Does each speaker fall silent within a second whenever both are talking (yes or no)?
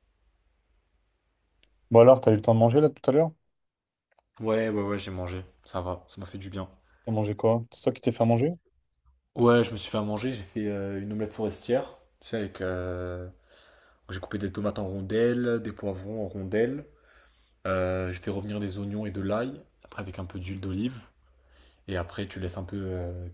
yes